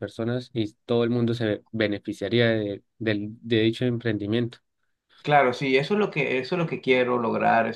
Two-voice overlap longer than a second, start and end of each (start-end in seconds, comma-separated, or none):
none